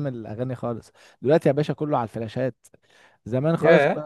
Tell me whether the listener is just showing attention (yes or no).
yes